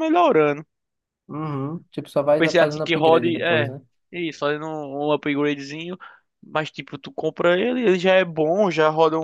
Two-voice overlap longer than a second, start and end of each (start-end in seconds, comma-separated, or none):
2.2-3.7